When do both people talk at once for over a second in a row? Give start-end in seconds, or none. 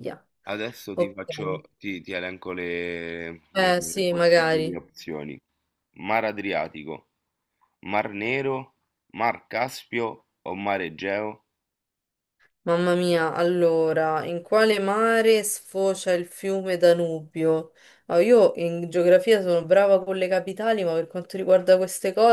3.5-4.8